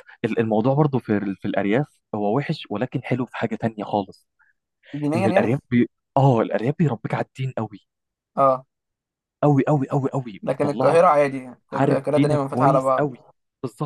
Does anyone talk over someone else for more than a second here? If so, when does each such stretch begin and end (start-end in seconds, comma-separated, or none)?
11.7-13.1